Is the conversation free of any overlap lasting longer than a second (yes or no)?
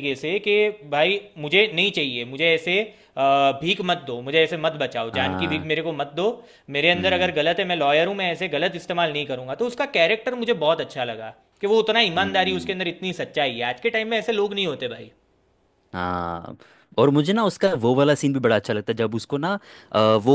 yes